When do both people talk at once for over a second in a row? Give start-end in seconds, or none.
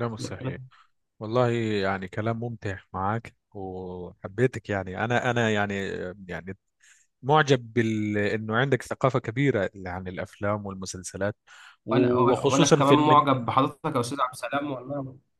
11.9-13.3